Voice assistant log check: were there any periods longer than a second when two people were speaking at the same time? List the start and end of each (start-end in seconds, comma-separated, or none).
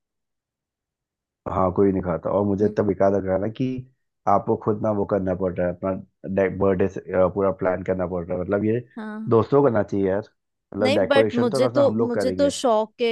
10.8-12.5